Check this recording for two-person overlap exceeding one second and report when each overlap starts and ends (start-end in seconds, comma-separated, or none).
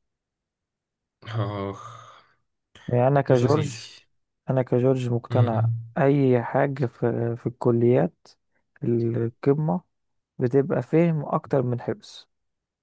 none